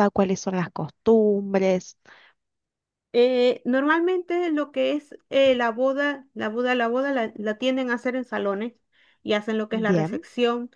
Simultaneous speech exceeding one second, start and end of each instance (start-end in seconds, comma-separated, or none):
none